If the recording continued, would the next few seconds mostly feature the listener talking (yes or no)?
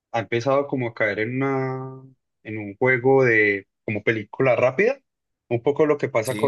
no